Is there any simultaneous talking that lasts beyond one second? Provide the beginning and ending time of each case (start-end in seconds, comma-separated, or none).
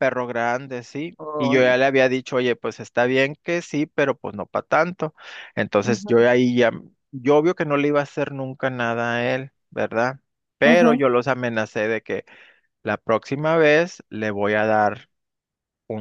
none